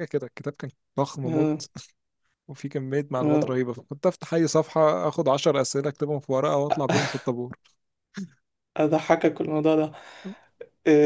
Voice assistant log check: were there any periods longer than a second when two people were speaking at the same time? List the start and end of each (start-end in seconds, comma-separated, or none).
none